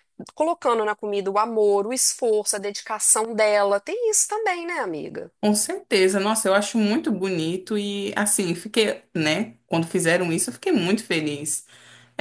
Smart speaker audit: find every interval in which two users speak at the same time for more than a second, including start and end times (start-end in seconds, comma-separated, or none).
none